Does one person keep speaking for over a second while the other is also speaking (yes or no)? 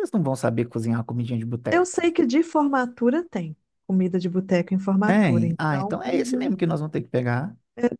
yes